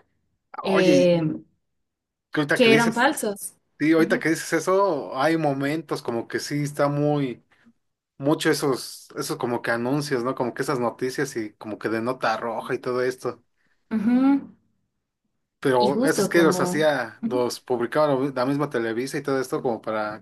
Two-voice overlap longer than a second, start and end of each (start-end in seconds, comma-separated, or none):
15.7-17.4